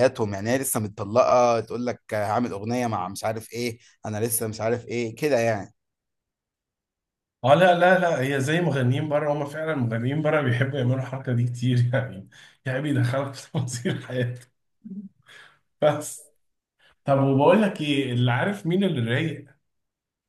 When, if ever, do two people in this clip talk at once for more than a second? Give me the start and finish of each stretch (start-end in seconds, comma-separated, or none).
none